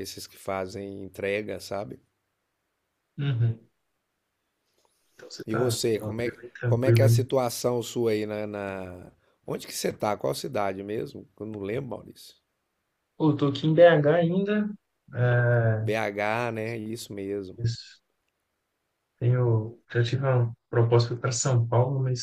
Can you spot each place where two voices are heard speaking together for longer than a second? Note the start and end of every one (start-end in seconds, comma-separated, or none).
5.5-7.3